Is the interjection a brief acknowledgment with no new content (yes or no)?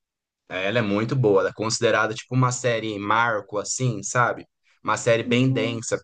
yes